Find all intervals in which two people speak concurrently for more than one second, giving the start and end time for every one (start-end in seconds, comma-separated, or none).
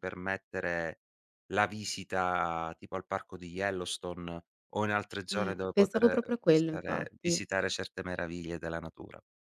5.3-7.4